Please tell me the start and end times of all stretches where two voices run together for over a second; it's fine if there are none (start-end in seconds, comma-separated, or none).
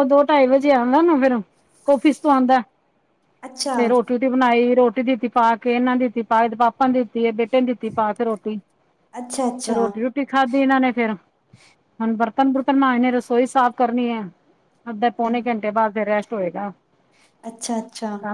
none